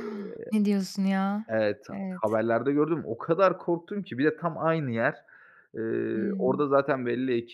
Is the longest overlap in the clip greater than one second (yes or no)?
no